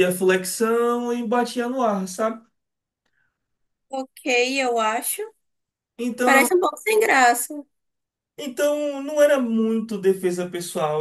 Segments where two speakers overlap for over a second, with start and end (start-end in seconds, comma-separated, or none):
none